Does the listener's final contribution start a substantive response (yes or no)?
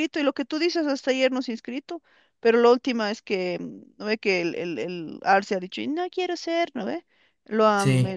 no